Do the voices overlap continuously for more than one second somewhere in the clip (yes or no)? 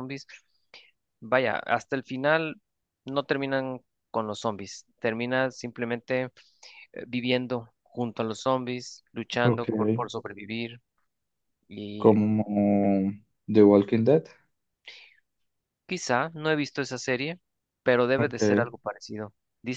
no